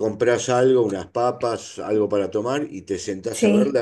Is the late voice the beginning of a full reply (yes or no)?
no